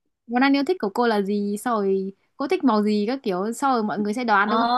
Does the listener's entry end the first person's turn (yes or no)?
yes